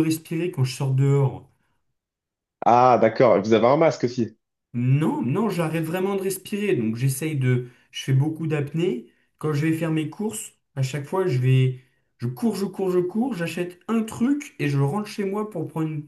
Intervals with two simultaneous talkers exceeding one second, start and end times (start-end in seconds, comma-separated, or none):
none